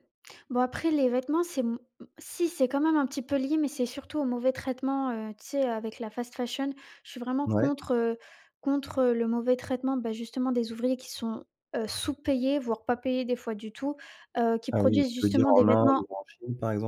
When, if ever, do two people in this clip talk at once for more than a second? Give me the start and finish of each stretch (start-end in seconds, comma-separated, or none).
14.7-16.0